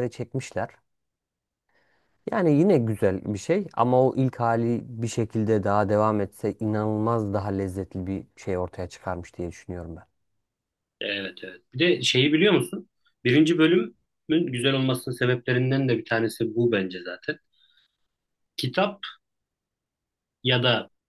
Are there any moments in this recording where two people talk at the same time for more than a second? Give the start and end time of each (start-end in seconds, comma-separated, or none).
none